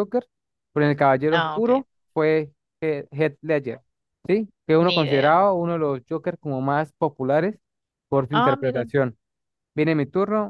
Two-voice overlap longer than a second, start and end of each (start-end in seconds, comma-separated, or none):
none